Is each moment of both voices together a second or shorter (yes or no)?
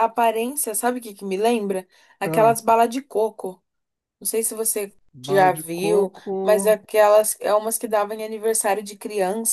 no